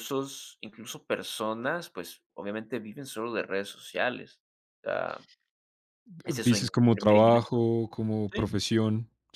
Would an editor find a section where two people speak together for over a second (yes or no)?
yes